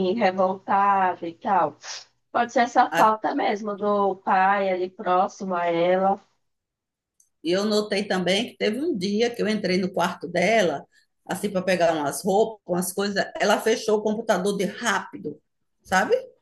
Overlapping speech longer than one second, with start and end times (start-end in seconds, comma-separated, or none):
none